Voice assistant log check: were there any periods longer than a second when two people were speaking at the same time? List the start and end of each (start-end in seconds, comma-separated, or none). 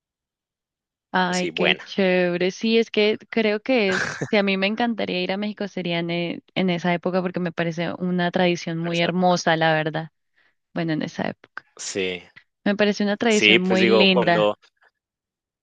13.3-14.6